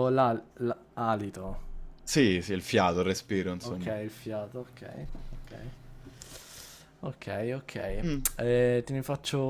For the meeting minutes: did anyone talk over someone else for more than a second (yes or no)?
no